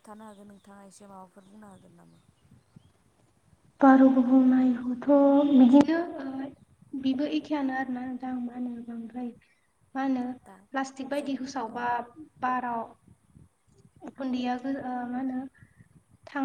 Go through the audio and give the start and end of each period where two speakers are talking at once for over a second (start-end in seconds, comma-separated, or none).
none